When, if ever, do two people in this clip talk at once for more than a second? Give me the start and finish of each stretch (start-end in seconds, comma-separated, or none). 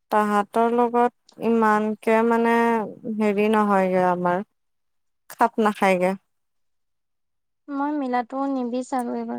none